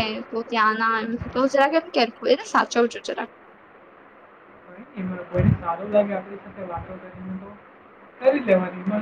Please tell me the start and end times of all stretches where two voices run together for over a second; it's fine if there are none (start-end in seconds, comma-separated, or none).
none